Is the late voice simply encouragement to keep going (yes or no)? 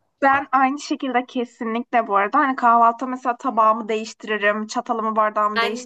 yes